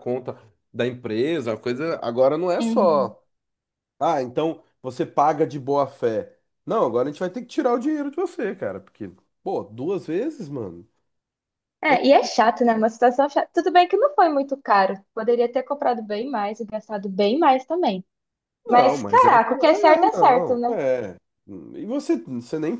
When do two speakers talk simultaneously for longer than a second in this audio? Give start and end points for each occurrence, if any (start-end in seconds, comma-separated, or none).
18.7-20.8